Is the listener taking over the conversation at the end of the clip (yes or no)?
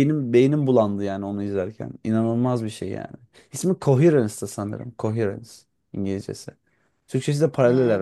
no